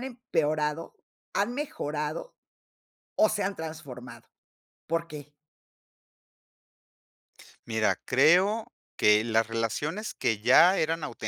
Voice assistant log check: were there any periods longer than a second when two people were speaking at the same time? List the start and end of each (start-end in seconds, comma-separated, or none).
none